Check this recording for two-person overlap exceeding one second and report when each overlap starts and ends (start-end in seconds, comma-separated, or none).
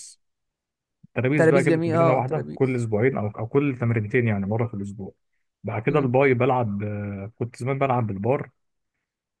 1.4-2.9